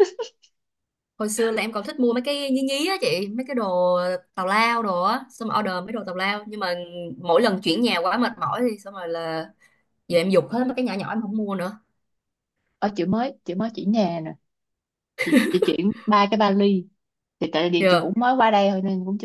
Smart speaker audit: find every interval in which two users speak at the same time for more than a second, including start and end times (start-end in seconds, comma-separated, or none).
none